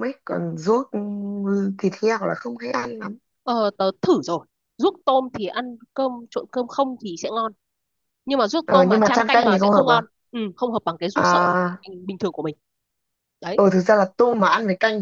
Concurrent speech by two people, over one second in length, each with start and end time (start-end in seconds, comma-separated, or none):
8.6-10.0